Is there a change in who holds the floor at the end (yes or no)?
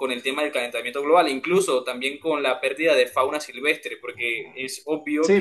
yes